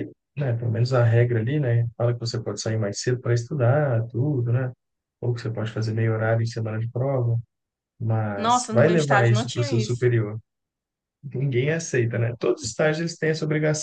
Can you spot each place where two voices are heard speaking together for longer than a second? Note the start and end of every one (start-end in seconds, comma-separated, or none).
8.3-10.1